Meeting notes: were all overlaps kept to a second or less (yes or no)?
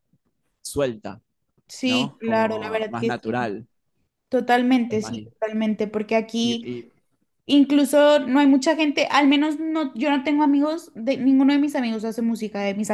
no